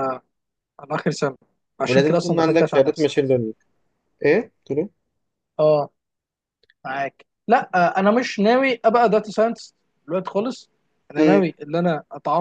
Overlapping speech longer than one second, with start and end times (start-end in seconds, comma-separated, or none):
1.9-3.2